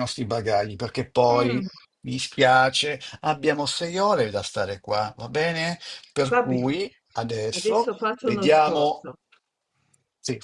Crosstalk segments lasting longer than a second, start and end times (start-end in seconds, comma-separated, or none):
7.5-9.0